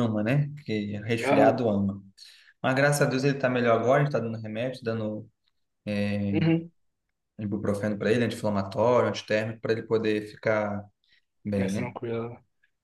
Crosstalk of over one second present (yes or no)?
no